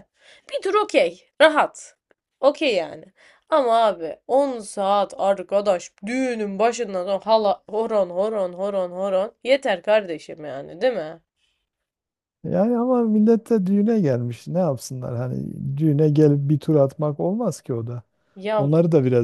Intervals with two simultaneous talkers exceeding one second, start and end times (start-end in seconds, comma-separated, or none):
none